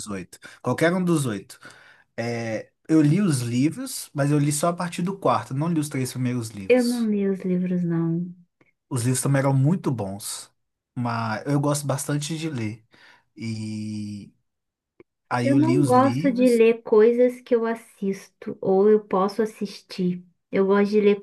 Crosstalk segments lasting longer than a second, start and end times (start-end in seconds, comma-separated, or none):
15.4-16.6